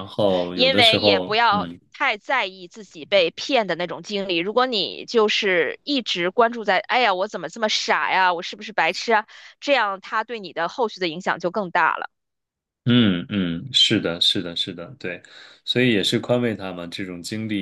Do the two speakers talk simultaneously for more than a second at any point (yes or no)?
yes